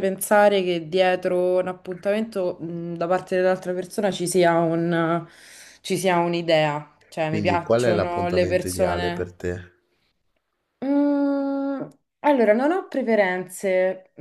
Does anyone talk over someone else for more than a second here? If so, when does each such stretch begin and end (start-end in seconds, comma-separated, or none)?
7.2-9.3